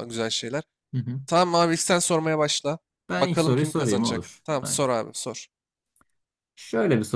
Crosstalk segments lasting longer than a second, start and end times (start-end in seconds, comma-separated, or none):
3.2-4.8